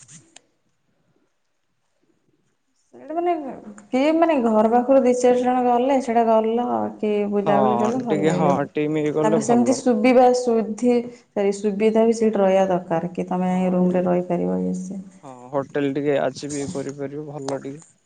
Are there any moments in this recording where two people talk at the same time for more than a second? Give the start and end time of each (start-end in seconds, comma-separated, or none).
7.4-9.7